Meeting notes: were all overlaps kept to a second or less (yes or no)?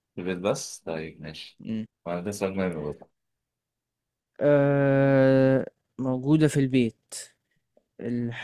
yes